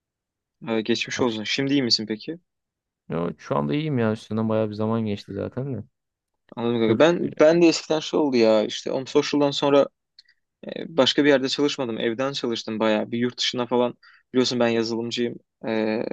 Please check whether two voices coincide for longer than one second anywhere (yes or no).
no